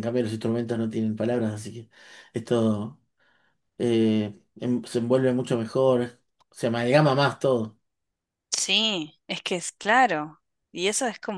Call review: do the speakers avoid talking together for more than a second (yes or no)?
yes